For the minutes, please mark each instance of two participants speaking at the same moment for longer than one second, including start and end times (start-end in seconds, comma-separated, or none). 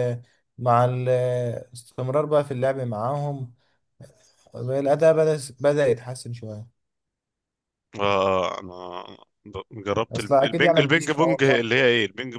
10.1-11.7